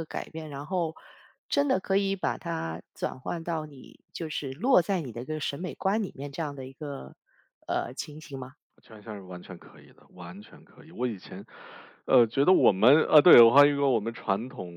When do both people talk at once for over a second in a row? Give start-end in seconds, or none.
none